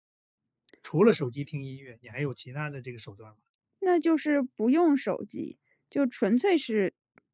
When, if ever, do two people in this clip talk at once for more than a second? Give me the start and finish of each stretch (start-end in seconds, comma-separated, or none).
none